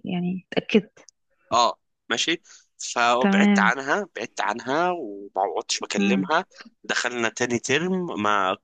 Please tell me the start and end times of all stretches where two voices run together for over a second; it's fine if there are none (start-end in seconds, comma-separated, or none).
none